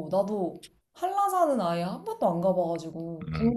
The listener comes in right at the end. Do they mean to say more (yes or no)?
yes